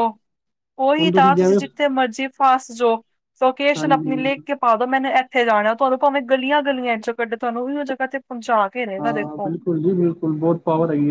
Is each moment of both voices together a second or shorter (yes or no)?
yes